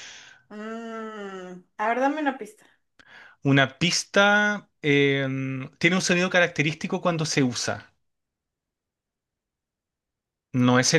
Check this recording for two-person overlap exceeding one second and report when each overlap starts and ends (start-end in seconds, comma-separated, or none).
none